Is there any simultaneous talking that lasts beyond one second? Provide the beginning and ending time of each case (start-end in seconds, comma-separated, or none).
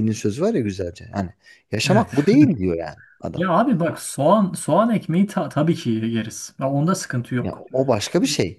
none